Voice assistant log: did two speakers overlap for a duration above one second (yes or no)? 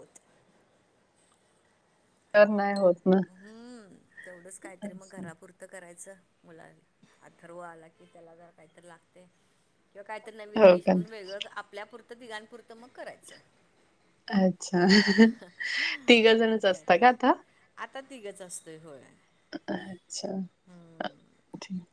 no